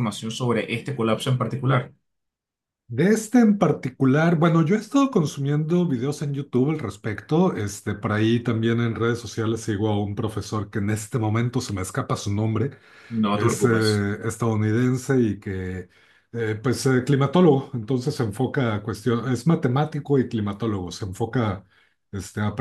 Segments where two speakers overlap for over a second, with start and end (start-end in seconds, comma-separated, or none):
none